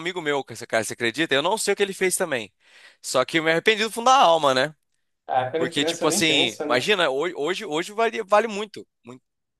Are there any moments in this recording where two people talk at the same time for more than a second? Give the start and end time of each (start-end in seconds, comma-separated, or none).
5.6-6.9